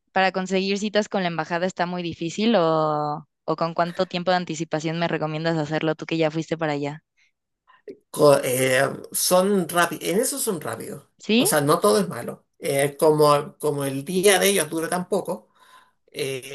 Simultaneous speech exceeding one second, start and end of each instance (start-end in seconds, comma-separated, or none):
none